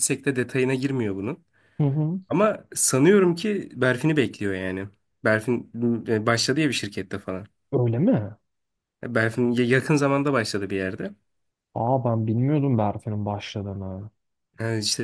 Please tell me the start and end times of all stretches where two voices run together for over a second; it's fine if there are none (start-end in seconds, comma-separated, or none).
none